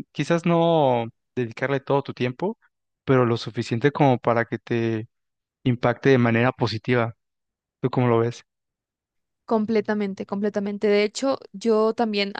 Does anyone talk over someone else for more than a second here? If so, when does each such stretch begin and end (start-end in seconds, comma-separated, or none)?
none